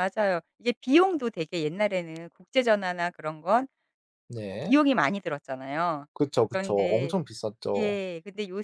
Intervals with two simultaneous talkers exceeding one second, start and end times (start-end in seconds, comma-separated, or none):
none